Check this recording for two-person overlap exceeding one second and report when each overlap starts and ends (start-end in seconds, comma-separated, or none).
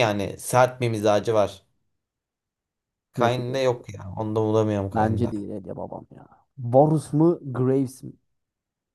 none